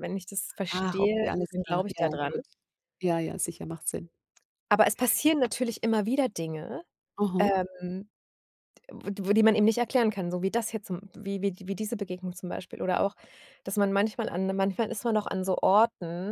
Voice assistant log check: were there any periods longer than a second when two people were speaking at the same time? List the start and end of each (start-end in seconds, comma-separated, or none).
0.7-2.3